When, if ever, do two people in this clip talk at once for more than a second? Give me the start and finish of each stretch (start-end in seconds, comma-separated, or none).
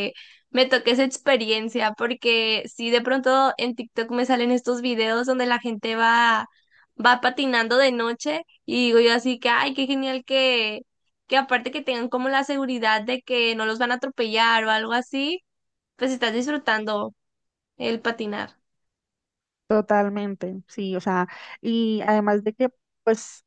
none